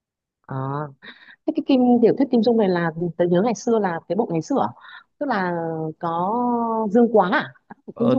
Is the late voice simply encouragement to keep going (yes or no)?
no